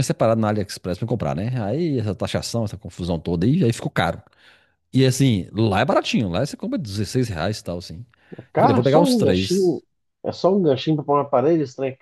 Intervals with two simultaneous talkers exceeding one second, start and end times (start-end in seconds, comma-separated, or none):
8.5-9.8